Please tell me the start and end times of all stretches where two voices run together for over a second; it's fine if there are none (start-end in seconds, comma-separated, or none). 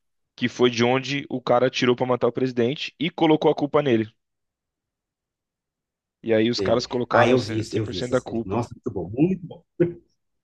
6.6-8.6